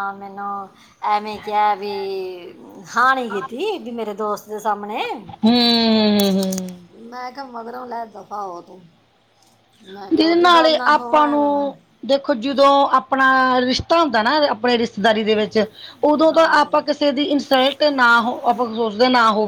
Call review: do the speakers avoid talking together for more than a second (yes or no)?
no